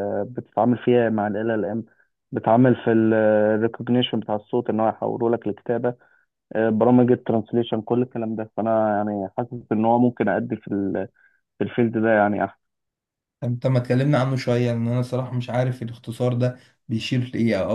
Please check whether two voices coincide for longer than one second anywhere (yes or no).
no